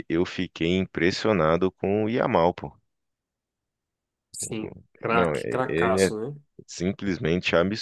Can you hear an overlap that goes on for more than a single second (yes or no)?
yes